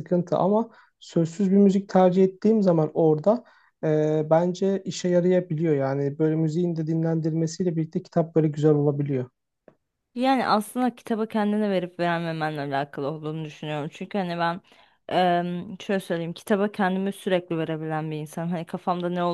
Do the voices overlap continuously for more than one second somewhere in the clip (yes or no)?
no